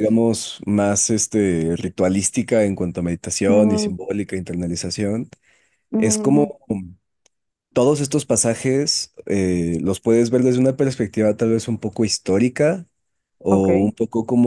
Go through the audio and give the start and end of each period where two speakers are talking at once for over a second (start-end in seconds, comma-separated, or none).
none